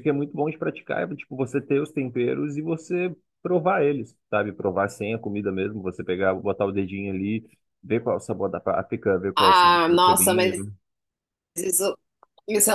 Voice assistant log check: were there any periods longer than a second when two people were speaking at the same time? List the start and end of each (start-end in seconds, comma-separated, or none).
9.3-10.7